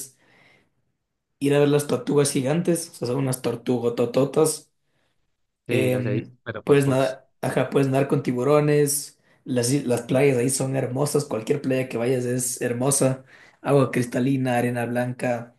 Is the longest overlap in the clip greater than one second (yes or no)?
yes